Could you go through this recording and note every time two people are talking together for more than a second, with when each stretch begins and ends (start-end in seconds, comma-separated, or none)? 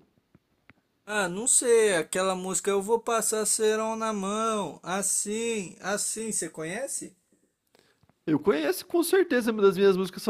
none